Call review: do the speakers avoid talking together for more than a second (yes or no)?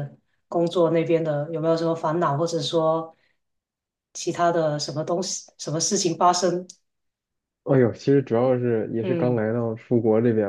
yes